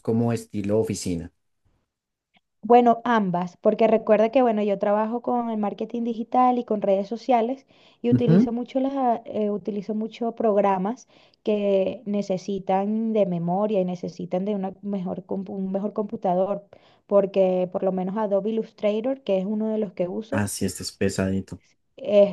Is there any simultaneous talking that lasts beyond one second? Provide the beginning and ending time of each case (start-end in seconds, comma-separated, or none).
none